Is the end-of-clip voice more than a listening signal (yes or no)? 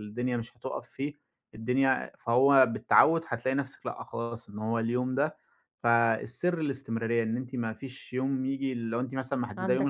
no